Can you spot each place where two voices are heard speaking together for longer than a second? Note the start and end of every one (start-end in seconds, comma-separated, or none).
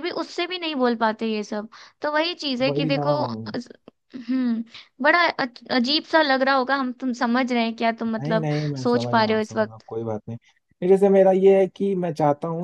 8.2-9.8